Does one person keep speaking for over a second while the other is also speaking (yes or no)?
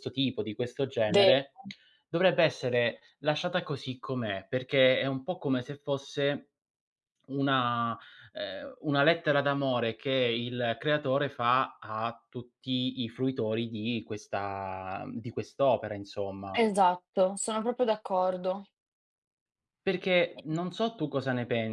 no